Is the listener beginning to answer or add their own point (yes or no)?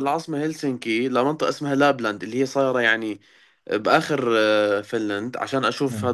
no